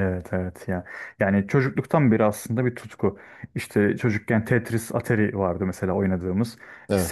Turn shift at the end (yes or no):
no